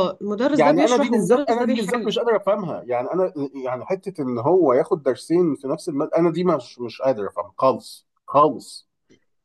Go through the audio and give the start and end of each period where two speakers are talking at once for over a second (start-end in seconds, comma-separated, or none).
0.5-2.1